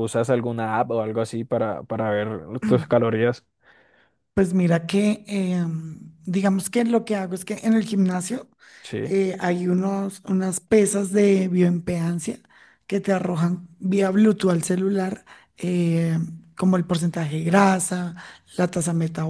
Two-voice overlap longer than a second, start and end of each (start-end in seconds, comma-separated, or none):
none